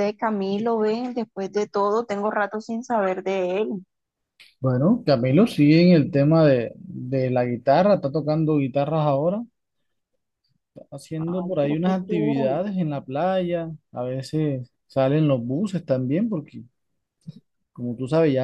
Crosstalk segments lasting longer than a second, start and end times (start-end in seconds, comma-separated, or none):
11.2-12.6